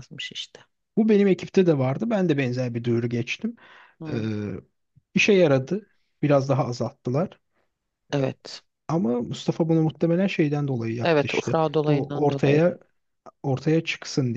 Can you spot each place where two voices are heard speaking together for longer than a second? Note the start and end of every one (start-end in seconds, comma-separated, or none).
11.0-12.6